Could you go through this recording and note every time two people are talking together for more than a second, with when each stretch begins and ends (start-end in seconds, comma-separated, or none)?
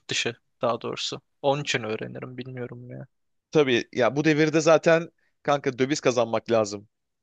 none